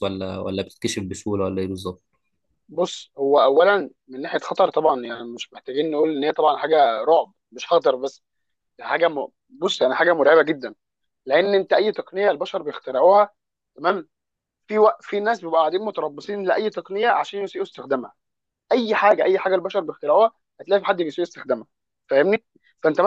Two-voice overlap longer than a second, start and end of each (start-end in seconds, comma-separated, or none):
none